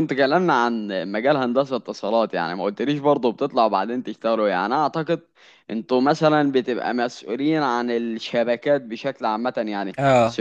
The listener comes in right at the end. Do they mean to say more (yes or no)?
no